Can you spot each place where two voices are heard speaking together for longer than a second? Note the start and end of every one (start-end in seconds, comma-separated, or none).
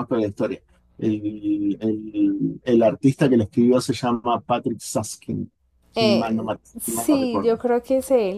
6.0-7.5